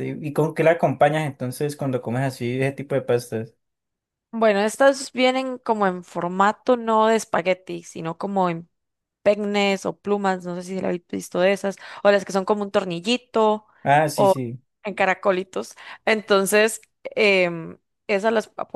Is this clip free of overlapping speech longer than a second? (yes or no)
yes